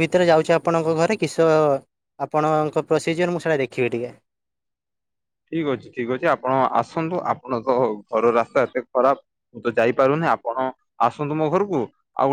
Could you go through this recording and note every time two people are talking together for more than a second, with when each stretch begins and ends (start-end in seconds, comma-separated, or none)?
none